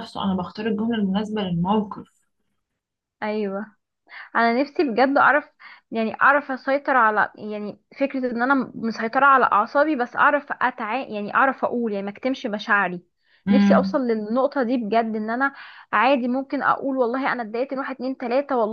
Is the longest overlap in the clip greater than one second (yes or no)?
no